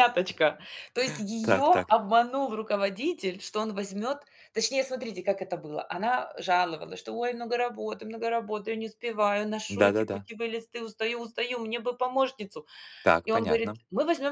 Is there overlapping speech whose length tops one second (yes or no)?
no